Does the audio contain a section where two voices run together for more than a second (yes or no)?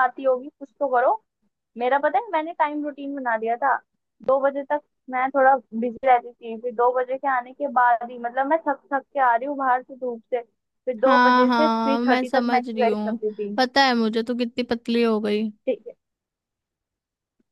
yes